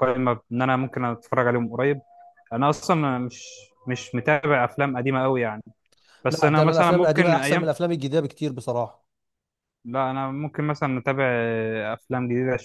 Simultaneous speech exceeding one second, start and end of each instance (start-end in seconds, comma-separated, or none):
6.3-7.7